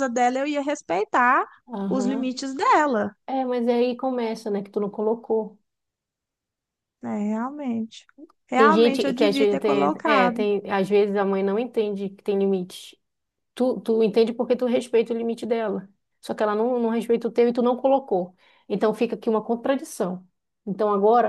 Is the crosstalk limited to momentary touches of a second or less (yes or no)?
no